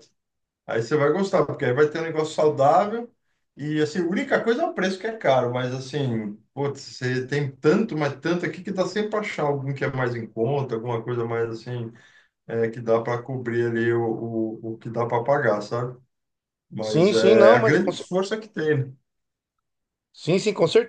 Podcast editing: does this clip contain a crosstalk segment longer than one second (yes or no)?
yes